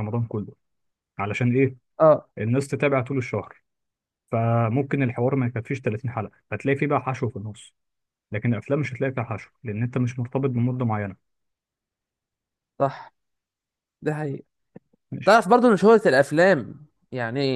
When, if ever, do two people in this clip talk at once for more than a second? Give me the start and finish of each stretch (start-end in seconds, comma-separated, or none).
none